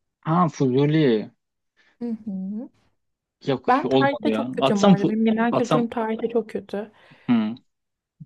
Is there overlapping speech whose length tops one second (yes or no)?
yes